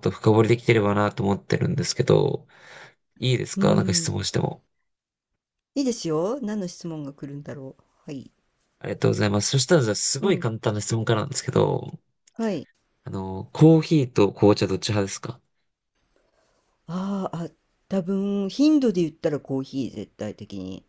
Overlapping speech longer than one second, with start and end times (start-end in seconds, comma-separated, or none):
none